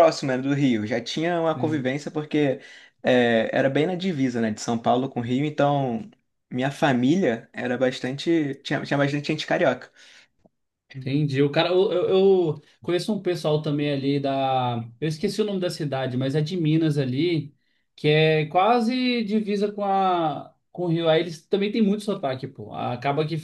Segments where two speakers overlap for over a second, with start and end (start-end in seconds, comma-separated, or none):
none